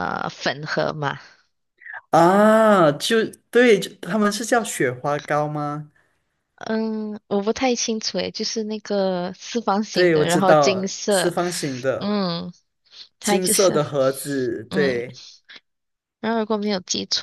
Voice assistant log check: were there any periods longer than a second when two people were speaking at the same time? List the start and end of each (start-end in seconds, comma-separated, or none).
9.9-11.3